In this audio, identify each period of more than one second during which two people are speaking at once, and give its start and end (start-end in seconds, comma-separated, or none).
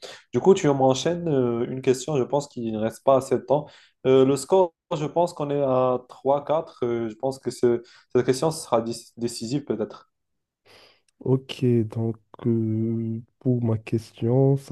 none